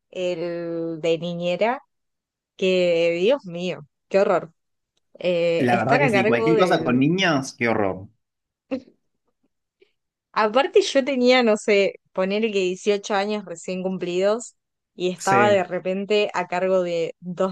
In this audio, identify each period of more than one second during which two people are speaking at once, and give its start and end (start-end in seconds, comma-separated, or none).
5.6-7.0